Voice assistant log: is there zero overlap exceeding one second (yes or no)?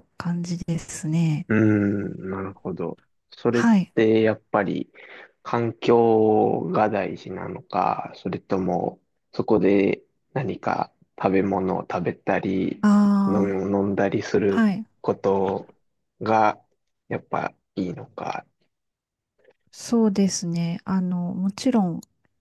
yes